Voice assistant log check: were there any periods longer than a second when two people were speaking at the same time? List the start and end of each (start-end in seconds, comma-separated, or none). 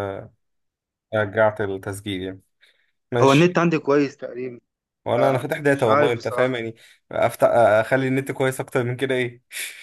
5.1-6.6